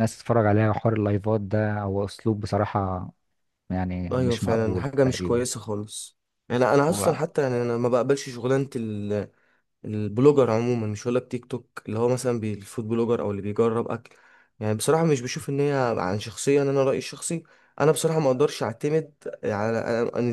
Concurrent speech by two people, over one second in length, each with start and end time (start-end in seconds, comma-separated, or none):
4.1-5.4